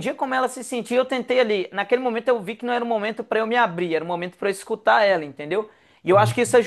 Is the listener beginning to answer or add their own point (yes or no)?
no